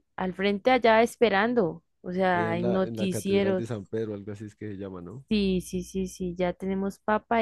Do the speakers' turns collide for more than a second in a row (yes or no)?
yes